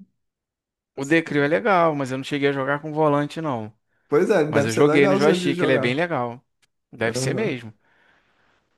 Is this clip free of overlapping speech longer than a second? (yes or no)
no